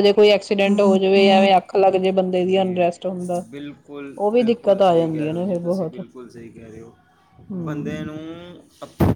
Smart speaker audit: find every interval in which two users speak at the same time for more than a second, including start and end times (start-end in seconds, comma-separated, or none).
4.3-6.0